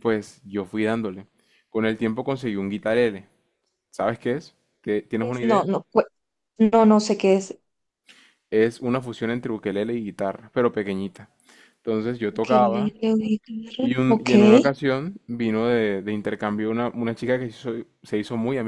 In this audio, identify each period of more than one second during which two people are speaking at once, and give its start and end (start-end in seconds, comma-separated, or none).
none